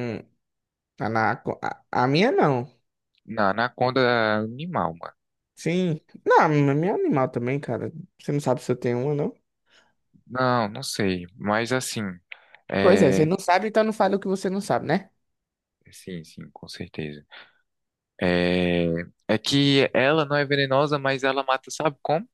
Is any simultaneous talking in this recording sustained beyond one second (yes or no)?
no